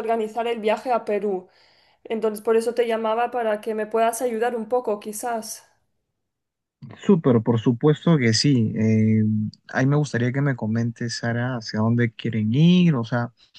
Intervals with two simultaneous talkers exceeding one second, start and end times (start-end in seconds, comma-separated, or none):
none